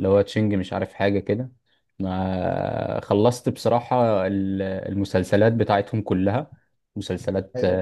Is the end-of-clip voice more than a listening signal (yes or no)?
no